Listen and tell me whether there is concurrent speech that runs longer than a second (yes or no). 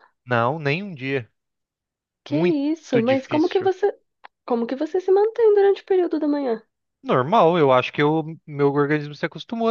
yes